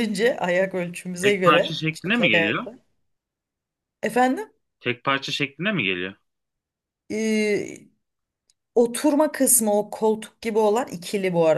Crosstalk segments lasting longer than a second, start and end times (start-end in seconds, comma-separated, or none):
1.2-2.7